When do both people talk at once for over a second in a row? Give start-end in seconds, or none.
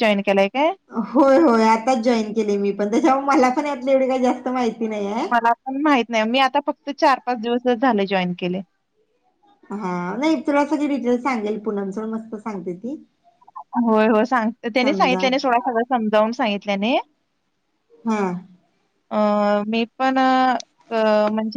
none